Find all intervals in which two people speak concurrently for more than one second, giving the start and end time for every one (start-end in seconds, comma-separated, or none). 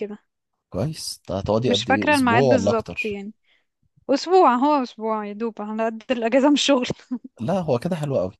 1.7-3.2